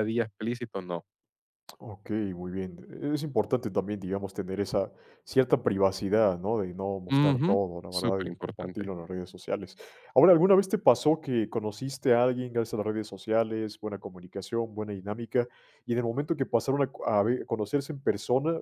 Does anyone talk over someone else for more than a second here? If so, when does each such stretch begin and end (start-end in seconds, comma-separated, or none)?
7.1-8.9